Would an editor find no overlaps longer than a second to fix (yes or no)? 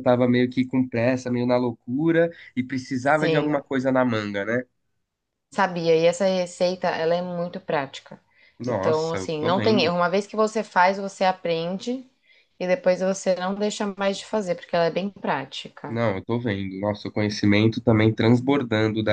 no